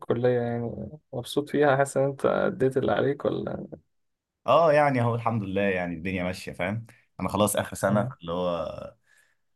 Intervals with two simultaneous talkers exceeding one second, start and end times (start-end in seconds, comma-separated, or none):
none